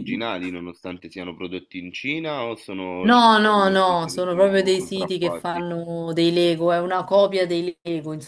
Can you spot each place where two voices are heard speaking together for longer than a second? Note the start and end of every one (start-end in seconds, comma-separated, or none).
3.0-5.6